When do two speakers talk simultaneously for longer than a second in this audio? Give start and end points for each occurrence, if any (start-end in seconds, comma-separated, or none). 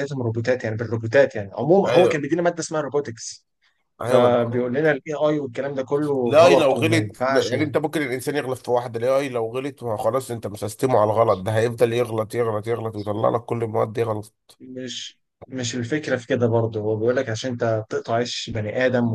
6.3-7.5